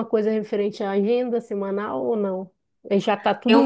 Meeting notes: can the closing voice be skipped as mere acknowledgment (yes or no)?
yes